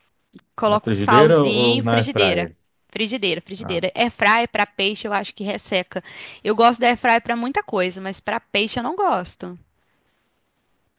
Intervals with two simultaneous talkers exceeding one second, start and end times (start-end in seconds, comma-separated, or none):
0.6-2.5